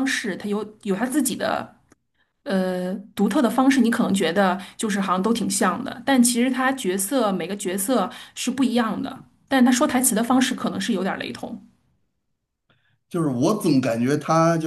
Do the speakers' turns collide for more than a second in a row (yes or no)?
no